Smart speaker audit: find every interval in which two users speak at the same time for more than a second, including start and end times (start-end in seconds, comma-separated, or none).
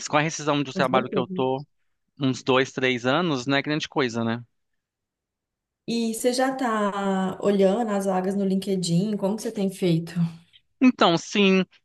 none